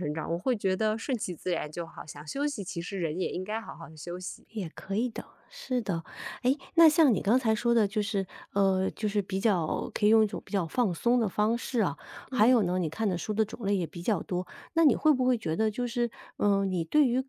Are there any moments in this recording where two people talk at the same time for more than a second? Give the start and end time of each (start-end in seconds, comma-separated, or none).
none